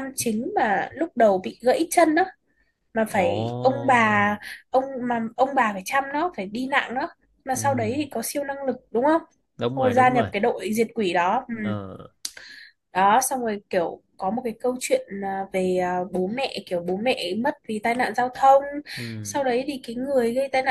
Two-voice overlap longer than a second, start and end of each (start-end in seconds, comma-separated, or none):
3.1-4.4